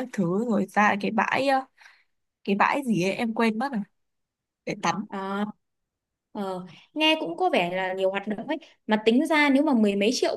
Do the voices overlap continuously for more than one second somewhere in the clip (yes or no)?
no